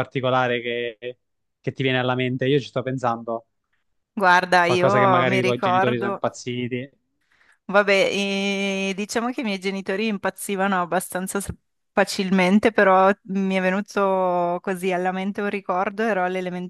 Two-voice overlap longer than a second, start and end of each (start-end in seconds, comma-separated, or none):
4.6-6.2